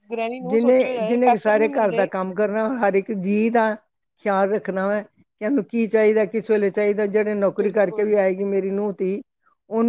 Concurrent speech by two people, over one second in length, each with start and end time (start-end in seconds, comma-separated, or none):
0.5-2.1